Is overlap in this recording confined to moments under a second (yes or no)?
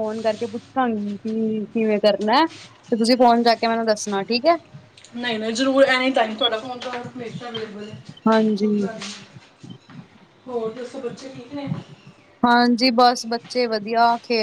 yes